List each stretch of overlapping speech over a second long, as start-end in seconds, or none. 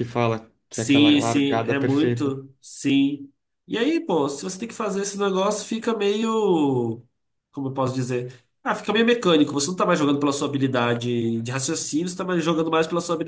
0.7-2.3